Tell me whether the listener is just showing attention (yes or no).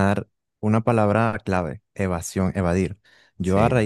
yes